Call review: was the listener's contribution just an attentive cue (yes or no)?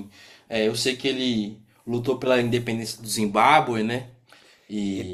no